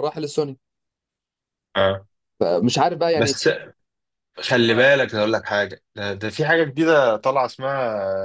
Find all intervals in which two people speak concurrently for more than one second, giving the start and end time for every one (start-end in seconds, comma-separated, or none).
none